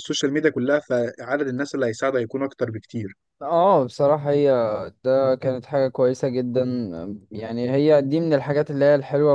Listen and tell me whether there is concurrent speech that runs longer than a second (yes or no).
no